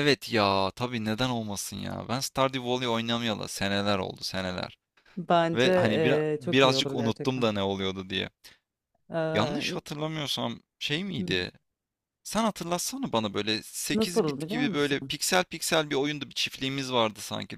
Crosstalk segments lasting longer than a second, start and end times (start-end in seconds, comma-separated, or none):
5.5-7.5, 13.9-15.1